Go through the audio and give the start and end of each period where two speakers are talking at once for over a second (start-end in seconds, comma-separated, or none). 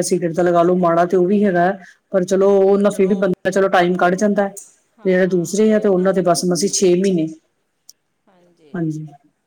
5.0-6.4